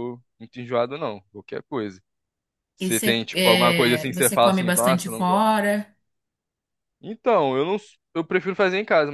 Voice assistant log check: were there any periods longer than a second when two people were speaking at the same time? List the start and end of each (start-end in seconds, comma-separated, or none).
2.8-5.5